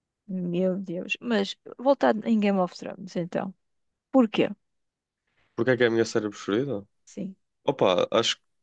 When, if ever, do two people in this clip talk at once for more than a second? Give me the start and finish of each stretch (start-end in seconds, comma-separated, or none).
none